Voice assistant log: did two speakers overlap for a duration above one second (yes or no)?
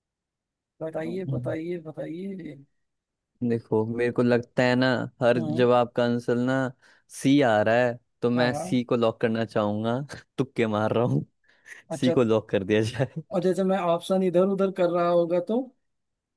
no